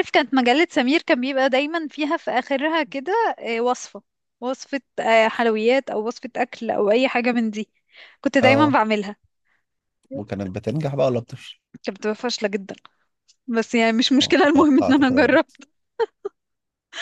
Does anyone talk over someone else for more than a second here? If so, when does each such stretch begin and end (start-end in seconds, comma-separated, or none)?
14.2-15.6